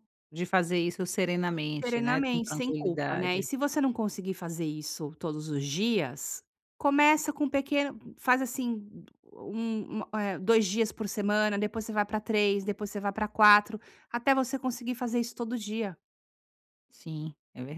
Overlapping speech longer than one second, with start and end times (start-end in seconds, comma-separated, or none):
1.8-3.5